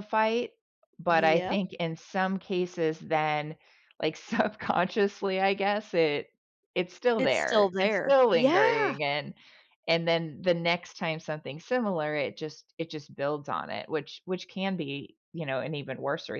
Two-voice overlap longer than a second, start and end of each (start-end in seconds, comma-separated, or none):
7.2-9.0